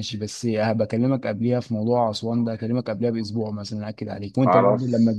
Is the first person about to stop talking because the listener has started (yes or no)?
no